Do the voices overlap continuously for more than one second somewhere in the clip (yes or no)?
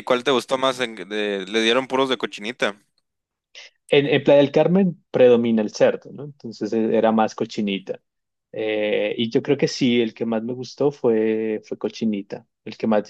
no